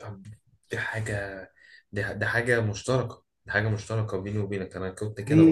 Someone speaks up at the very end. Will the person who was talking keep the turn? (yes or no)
no